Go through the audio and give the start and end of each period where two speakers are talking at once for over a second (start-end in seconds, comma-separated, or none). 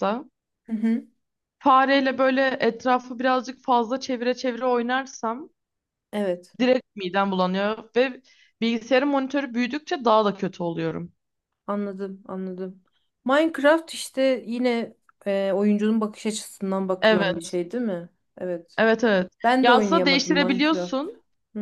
19.4-21.1